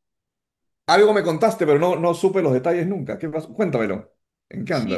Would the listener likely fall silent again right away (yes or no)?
no